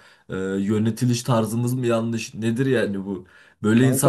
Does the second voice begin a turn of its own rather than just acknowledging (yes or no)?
no